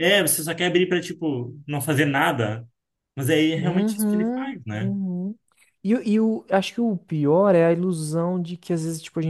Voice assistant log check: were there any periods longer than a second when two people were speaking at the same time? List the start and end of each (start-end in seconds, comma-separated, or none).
3.5-4.9